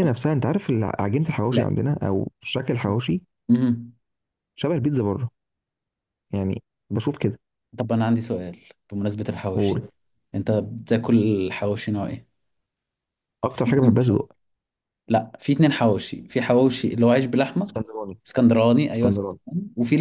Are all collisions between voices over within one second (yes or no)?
yes